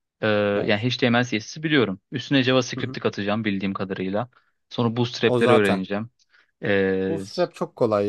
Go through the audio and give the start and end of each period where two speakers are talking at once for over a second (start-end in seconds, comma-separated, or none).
none